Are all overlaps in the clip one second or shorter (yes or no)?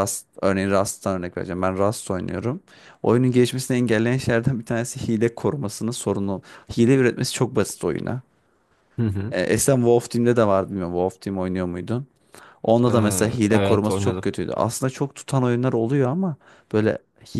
no